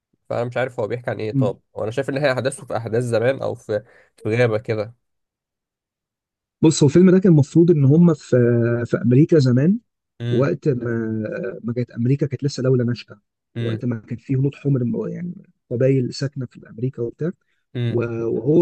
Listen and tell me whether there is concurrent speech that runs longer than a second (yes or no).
no